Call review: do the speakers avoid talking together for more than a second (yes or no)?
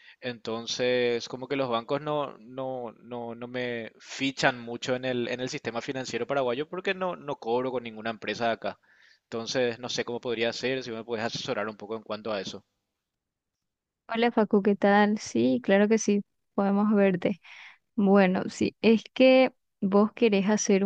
yes